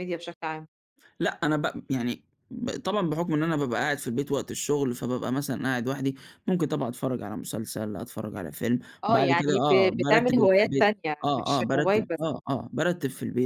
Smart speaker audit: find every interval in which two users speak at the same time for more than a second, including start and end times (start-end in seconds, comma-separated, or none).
9.0-12.2